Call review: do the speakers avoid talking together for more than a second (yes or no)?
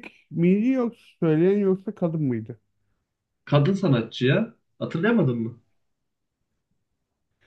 yes